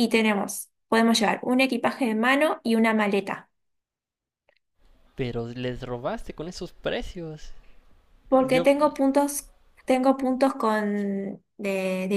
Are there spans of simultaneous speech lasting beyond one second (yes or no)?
no